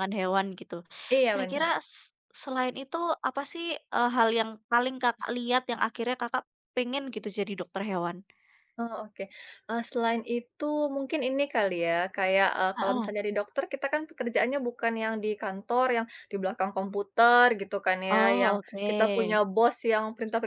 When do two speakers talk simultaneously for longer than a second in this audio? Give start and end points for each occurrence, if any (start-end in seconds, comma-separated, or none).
18.1-19.4